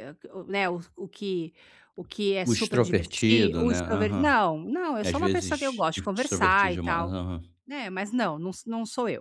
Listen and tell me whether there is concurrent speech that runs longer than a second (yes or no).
yes